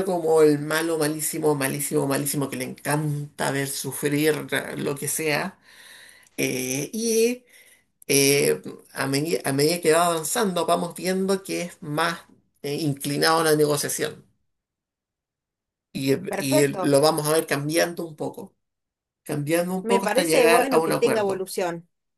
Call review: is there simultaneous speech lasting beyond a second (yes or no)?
yes